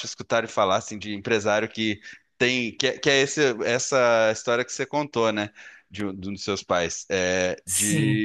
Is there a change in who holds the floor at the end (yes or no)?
no